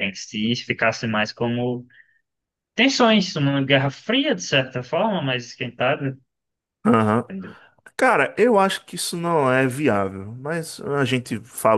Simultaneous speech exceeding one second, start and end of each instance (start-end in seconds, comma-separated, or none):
none